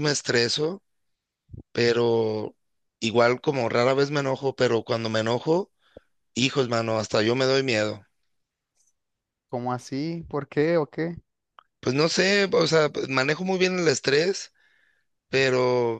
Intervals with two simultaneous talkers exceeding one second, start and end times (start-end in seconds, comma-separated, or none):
none